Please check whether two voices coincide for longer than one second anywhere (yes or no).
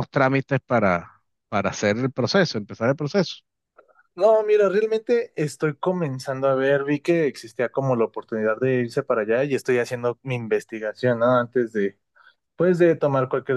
no